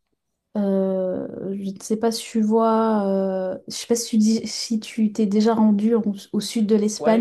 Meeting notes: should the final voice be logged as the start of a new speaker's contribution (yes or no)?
yes